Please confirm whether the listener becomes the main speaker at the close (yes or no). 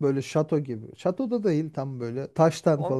yes